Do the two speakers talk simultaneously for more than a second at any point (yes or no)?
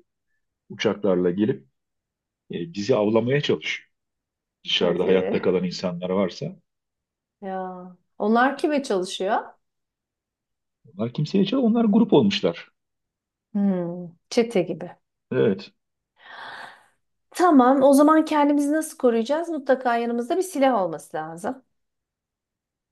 no